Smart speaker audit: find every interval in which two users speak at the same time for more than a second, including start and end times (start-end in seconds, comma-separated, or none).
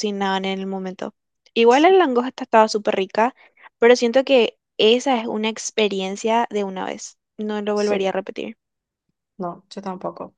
none